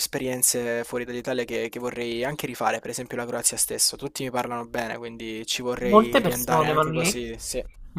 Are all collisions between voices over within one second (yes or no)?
no